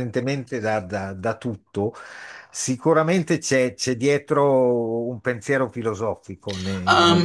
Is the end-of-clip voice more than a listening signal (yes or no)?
yes